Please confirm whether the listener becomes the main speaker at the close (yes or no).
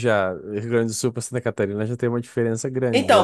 yes